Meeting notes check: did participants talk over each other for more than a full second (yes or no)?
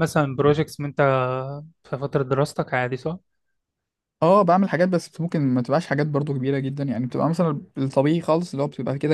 no